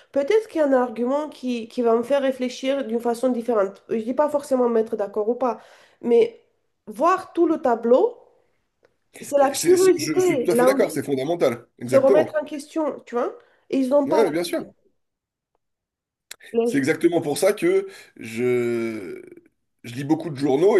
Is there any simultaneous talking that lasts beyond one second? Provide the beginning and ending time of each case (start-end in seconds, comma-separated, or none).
9.4-11.0